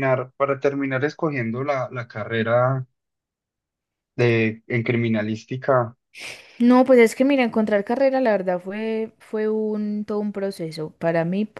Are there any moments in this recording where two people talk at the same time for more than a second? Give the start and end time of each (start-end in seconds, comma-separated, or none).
none